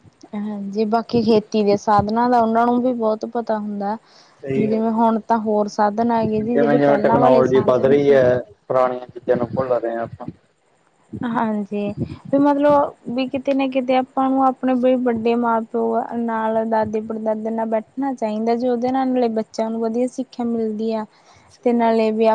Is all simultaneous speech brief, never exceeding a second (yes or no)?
no